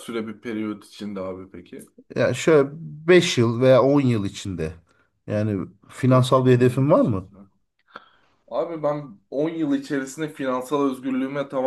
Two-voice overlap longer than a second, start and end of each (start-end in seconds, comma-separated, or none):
6.1-7.3